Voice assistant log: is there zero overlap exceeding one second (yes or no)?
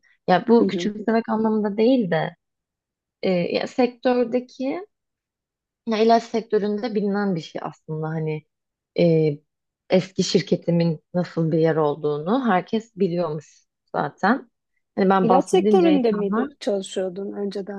no